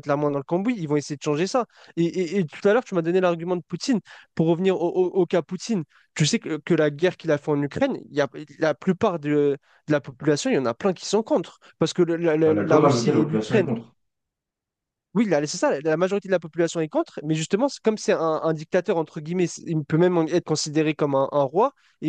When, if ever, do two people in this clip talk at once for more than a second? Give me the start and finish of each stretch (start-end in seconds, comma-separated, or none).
12.4-13.7